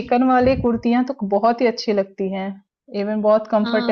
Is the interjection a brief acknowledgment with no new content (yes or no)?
no